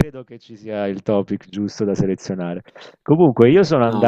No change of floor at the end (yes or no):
yes